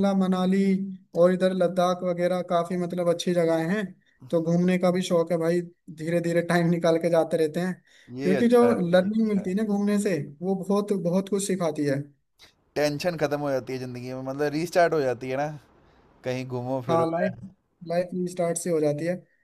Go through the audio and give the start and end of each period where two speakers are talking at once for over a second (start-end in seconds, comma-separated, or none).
8.2-9.7